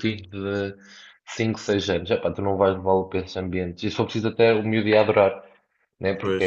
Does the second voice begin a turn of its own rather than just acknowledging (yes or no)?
no